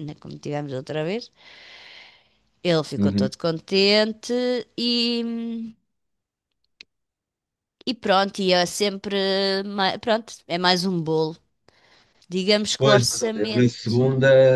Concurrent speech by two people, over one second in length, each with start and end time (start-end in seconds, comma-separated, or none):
12.8-14.0